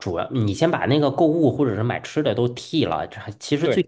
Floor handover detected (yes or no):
no